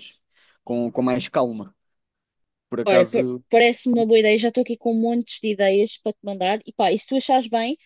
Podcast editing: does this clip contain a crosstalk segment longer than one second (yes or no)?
no